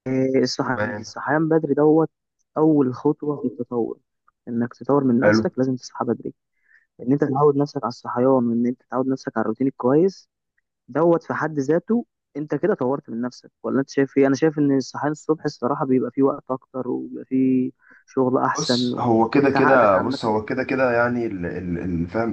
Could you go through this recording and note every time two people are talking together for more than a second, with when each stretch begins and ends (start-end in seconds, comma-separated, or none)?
18.5-20.8